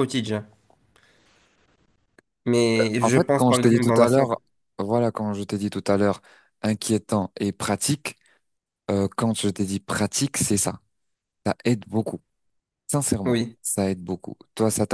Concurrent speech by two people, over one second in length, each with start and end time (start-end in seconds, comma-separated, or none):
3.0-4.3